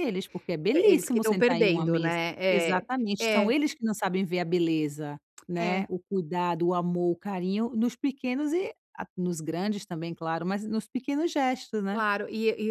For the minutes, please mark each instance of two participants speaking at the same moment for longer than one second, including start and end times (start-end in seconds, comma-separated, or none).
0.8-2.5